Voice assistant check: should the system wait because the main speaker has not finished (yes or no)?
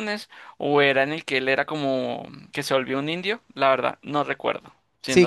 no